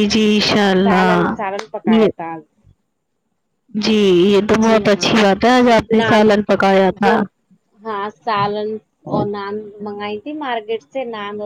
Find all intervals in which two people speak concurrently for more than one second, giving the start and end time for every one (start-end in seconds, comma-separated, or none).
none